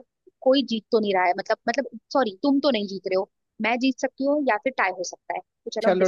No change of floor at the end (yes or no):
no